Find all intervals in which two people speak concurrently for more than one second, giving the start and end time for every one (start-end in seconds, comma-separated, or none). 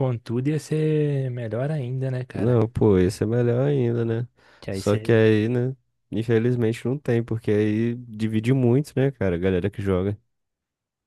none